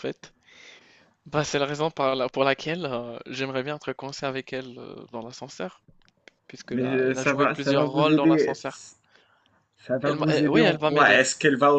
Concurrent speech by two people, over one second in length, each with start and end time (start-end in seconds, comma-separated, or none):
6.7-8.5, 10.0-11.2